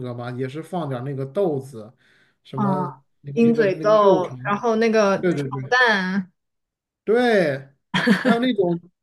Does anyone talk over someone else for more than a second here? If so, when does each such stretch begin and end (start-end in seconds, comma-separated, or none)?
2.5-4.4